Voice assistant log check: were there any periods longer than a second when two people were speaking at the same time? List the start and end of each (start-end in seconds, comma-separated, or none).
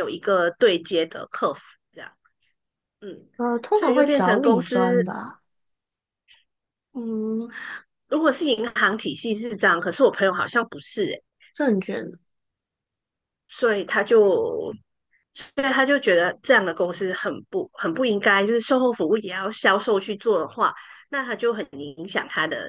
3.7-5.0